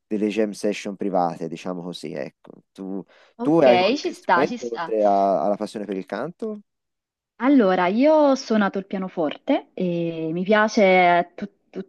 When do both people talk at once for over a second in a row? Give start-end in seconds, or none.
3.4-5.0